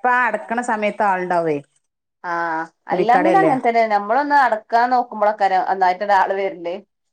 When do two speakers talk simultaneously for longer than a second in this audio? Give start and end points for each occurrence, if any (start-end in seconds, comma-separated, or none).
none